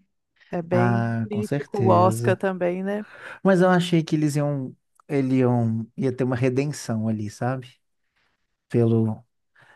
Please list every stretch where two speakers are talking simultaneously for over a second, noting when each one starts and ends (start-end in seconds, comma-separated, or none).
0.7-2.4